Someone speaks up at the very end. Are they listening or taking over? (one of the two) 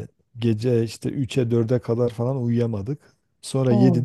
listening